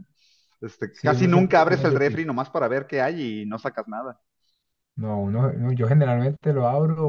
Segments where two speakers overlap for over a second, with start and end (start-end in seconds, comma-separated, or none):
0.9-2.2